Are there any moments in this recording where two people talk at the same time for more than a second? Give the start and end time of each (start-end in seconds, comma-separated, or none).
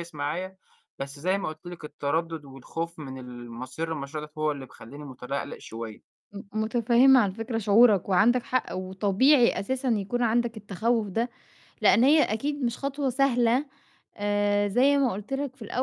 none